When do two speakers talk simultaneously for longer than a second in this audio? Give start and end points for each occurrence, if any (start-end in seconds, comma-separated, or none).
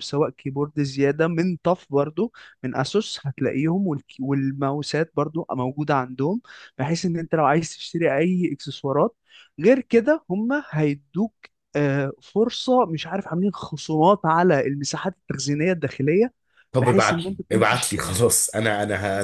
16.8-18.2